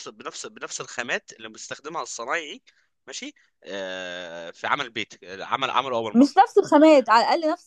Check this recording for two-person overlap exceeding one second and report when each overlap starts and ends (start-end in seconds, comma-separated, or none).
none